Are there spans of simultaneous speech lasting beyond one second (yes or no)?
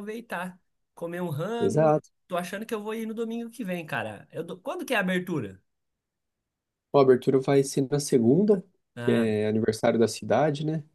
no